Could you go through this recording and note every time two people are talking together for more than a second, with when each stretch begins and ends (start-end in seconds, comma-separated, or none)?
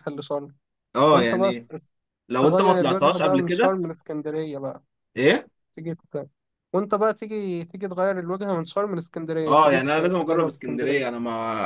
2.4-3.8, 9.5-11.0